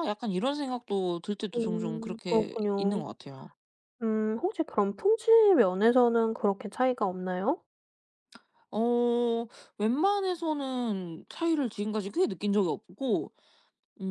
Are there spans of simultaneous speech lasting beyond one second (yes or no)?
yes